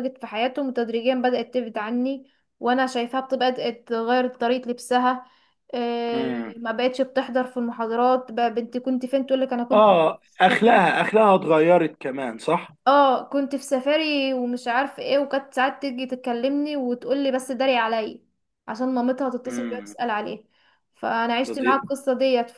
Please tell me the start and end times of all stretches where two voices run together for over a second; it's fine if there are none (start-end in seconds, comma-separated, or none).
none